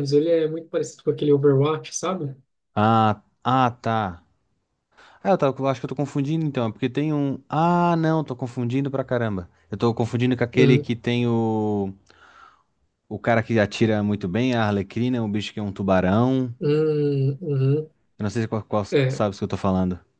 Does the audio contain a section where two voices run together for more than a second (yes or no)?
no